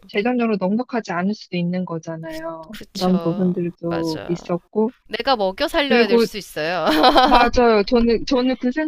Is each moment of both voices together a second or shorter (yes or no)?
no